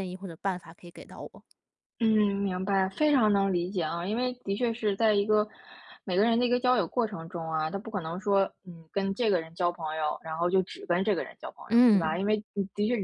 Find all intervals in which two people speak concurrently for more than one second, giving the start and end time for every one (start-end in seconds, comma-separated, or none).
none